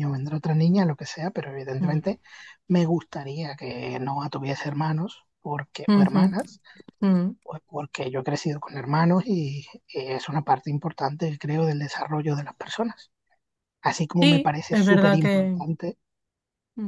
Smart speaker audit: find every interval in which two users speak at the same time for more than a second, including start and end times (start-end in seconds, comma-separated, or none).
14.2-15.6